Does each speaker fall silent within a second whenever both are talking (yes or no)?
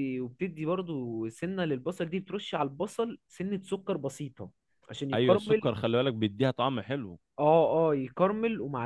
yes